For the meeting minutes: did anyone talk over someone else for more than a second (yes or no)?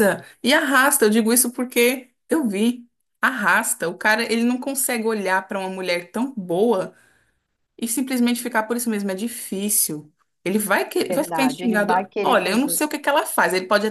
yes